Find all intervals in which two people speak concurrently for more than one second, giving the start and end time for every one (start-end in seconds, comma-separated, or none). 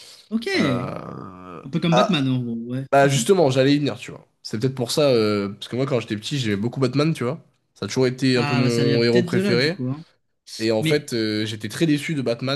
8.3-9.8